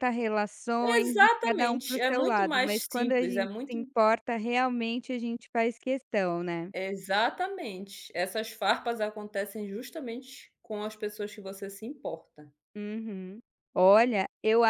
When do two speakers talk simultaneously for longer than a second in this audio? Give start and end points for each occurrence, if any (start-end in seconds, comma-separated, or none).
0.8-3.8